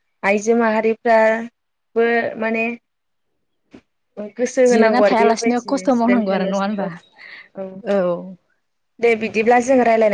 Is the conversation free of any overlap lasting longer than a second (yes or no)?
no